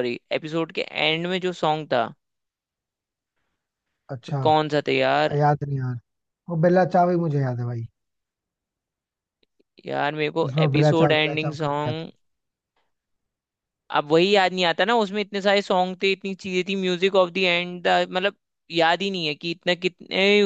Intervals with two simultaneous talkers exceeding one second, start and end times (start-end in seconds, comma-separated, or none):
10.4-12.1